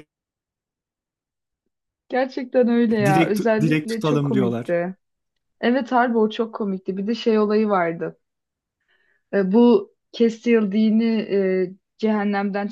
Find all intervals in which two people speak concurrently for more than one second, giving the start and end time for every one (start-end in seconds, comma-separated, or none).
3.0-4.8